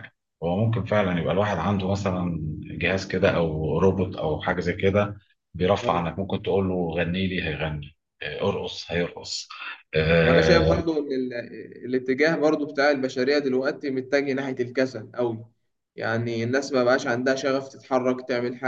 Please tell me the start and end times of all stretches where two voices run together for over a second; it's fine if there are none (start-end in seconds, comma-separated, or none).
none